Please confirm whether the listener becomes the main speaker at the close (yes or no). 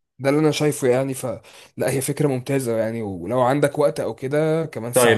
yes